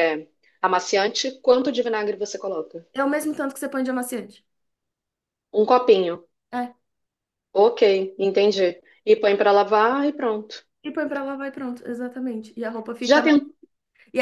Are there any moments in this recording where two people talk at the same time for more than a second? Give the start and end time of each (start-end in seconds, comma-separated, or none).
none